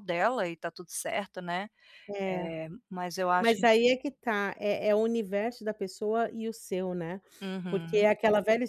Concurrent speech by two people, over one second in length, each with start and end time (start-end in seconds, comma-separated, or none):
none